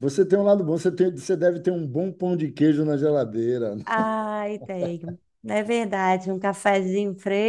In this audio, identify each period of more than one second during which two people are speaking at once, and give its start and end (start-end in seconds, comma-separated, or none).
none